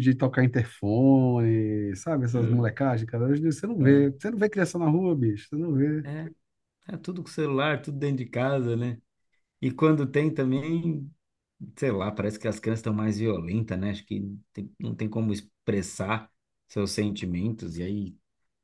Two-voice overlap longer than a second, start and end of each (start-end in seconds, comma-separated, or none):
none